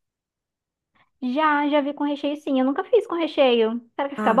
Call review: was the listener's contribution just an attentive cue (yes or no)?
no